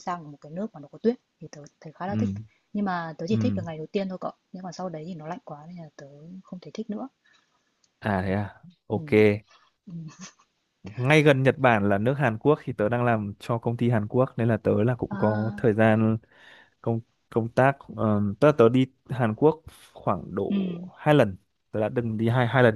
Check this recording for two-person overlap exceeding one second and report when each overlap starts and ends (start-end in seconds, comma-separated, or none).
none